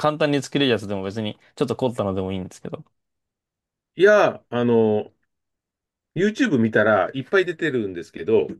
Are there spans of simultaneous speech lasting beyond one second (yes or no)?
no